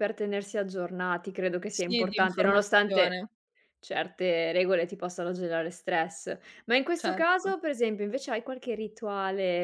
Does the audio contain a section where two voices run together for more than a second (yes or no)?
yes